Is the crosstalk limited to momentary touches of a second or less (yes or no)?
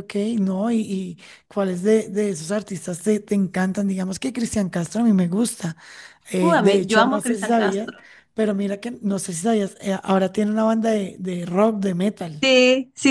no